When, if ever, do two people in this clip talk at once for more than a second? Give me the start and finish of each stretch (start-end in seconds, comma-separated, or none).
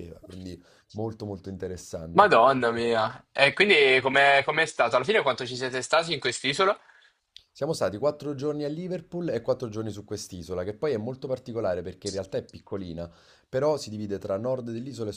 none